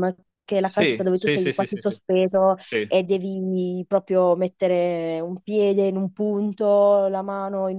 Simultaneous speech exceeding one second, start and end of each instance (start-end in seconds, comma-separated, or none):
0.7-2.0